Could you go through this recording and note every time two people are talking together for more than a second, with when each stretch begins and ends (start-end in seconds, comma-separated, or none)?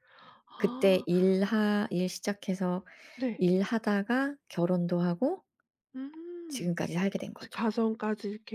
none